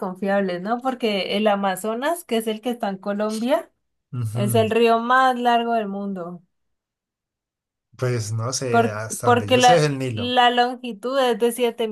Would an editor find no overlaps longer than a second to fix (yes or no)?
no